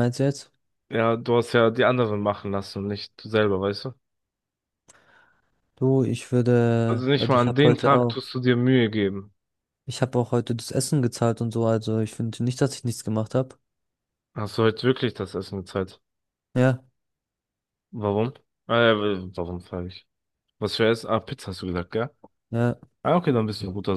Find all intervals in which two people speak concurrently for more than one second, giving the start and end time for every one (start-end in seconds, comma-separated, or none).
6.8-8.3